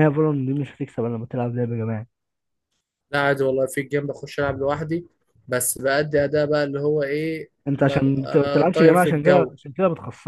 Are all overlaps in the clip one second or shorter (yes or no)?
no